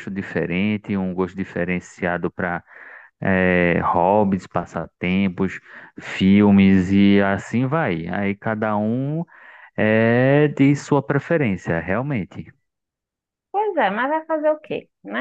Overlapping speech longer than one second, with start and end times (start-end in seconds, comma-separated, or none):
none